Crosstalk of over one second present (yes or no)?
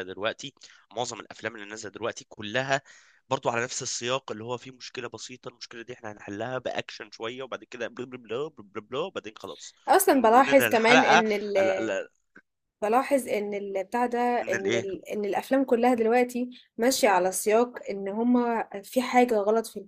yes